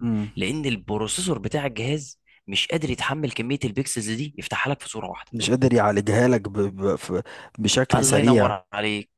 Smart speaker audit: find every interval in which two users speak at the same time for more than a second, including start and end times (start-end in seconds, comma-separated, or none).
none